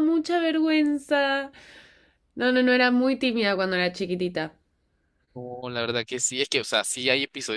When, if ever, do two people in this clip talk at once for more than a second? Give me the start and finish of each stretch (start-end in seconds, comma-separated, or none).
none